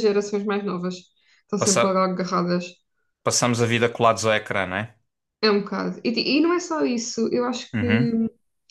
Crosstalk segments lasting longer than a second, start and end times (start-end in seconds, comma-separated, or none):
none